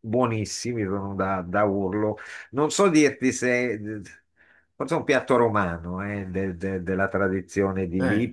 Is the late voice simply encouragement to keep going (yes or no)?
yes